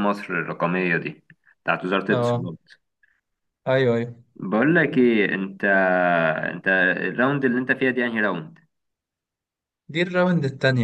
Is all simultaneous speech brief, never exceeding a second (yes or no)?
yes